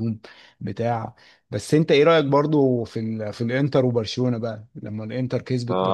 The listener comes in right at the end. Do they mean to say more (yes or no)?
yes